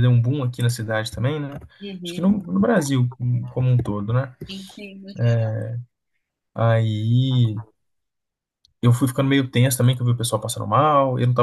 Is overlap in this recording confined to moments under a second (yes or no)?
yes